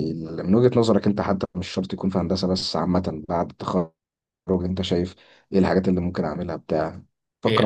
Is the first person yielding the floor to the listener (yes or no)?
yes